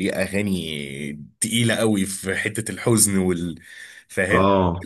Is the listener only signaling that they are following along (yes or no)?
no